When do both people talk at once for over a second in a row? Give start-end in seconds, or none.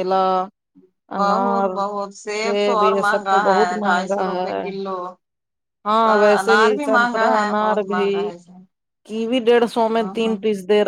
2.6-4.6, 6.0-8.1